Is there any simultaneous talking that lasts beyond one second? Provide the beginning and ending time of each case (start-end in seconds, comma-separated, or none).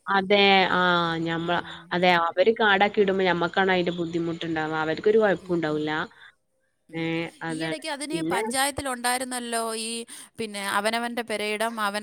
none